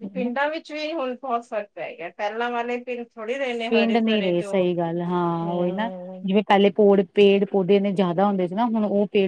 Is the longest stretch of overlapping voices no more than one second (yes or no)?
yes